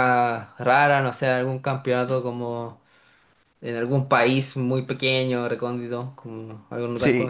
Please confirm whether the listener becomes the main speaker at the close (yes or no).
yes